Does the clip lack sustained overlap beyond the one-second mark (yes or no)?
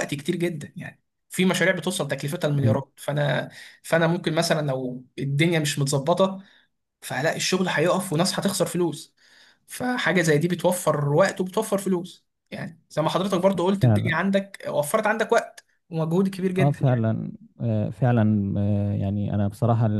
yes